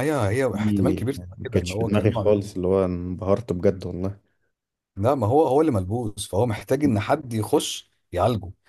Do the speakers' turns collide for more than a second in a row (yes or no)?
yes